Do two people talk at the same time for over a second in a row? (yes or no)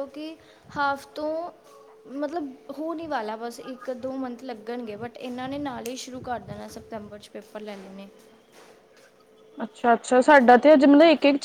no